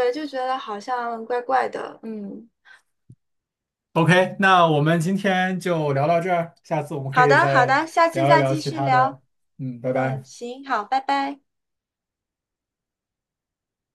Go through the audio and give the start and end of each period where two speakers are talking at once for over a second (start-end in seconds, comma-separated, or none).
7.1-9.2